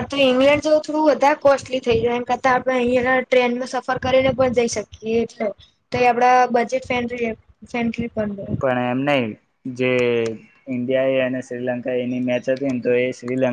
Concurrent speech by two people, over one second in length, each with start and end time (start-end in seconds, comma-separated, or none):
none